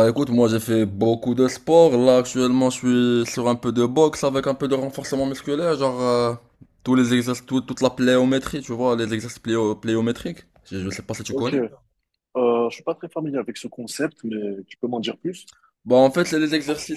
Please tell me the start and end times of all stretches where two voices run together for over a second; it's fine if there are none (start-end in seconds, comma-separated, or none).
none